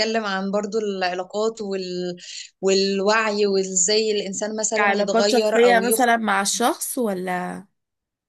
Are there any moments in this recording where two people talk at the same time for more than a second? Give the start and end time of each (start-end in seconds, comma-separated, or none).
4.8-6.1